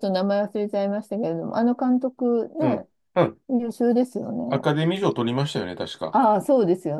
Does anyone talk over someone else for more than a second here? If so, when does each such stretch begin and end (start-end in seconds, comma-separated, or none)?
none